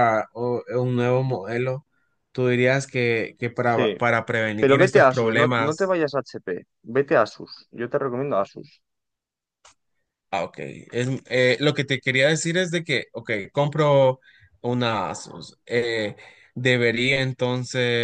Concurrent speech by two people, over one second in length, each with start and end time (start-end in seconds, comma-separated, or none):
4.6-6.0